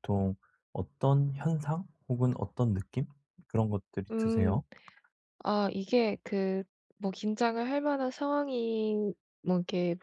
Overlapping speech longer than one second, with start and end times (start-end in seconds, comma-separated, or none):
none